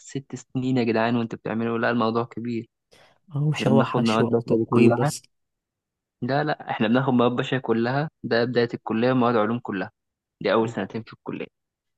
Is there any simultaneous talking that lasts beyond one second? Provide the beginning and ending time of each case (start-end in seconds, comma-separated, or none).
3.5-5.1